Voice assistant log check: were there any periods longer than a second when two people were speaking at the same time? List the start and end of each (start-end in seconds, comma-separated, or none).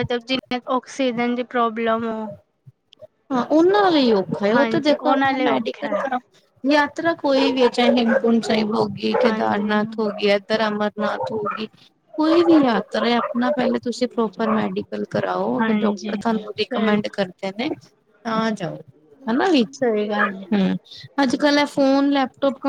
4.5-6.0, 15.6-17.2